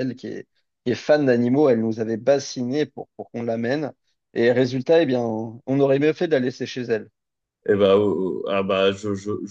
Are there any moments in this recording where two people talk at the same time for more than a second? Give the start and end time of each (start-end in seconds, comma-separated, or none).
none